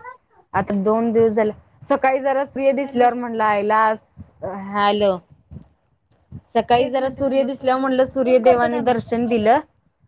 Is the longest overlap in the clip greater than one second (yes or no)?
yes